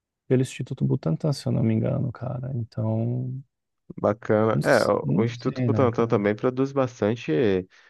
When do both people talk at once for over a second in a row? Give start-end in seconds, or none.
4.5-6.1